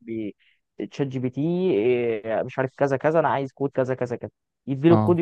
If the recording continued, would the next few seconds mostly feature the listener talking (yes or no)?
no